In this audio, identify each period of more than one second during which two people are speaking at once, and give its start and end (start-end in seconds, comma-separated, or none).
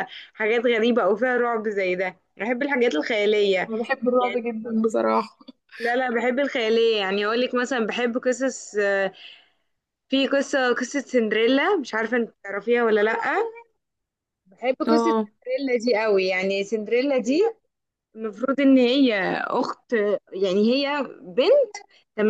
none